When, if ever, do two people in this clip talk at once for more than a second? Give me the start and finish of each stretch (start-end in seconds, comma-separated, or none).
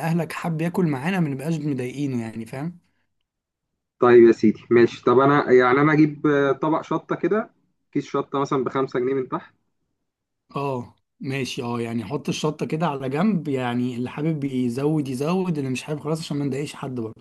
none